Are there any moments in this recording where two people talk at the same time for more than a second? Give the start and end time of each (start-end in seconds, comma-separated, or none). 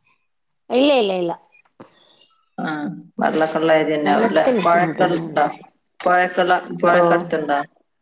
4.0-5.4